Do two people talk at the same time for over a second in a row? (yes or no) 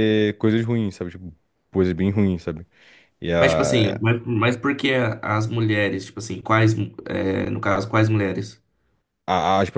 no